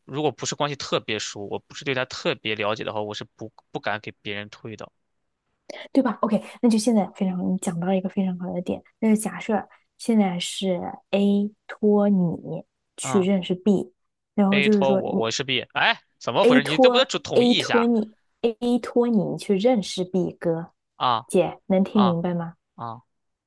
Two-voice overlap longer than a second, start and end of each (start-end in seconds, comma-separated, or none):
16.4-17.9